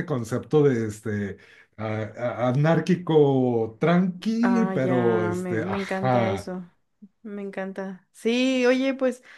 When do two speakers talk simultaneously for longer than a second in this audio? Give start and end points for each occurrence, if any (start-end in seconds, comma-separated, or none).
4.4-6.5